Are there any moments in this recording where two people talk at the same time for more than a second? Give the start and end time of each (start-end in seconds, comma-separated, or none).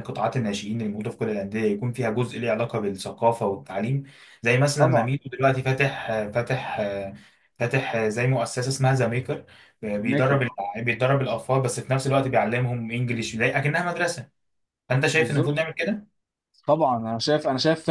none